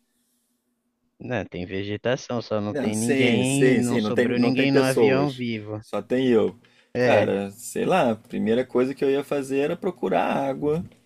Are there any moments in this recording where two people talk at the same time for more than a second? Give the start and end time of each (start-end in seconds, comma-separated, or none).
2.7-5.8